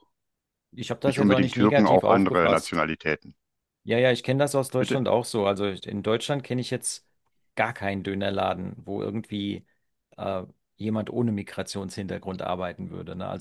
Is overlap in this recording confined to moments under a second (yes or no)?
no